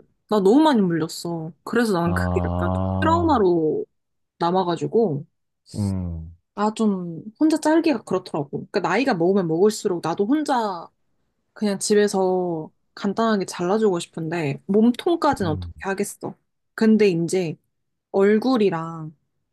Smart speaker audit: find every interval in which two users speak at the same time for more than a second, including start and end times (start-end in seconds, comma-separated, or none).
2.0-3.4